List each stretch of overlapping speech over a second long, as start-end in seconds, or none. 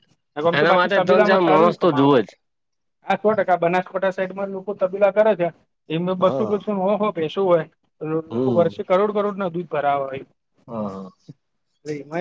0.6-2.2